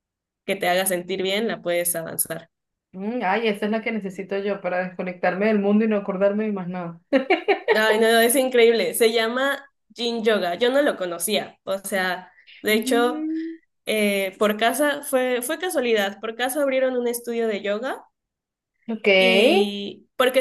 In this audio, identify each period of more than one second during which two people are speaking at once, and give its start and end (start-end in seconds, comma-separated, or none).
none